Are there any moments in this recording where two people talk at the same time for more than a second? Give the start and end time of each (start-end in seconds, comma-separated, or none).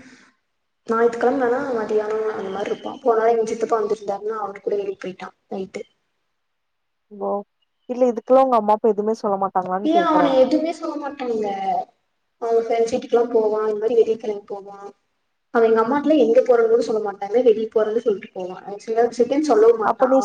none